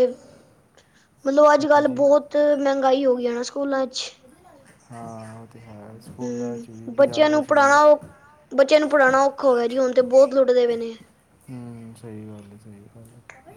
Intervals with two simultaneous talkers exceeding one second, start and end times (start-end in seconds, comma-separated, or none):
6.2-7.7